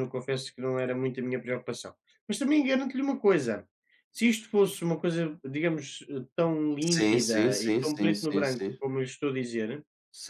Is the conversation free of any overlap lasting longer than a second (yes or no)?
no